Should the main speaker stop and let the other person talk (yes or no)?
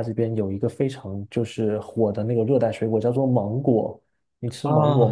yes